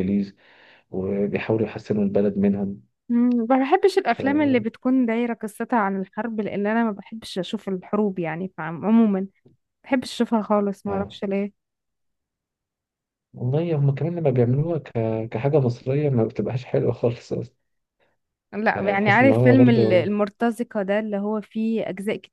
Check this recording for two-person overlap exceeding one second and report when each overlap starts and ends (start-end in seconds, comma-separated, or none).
18.8-20.1